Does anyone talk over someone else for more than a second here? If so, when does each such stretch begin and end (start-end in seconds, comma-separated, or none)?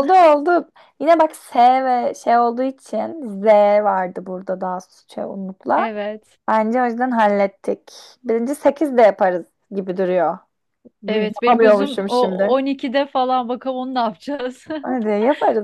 11.1-12.6